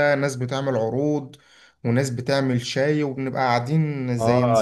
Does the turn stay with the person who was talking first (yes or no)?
no